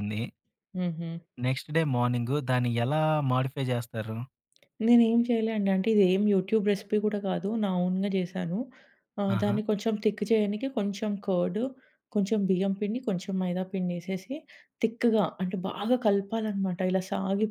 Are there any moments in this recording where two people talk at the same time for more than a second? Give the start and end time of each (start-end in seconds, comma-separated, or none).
none